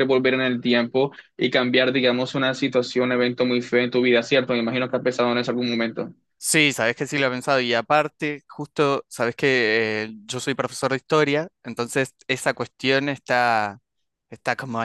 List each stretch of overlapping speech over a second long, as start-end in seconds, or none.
none